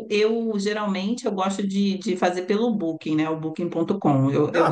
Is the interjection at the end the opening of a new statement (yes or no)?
yes